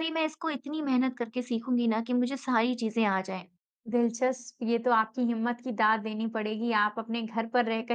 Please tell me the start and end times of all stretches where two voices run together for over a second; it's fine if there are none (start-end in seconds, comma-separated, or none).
none